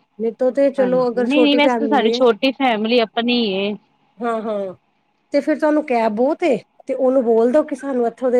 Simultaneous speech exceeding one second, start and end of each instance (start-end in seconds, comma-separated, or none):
0.8-2.2